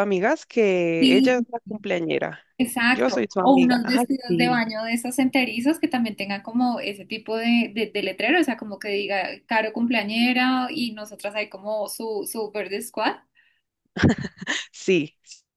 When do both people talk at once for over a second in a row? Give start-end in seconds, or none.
2.9-4.6